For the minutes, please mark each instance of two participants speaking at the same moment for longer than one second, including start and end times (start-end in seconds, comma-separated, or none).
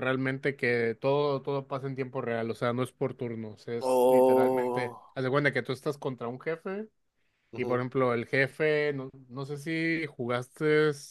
3.8-5.0